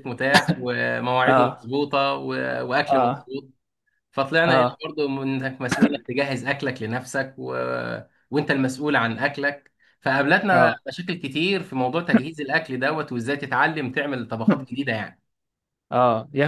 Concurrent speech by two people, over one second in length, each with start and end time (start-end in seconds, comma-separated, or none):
none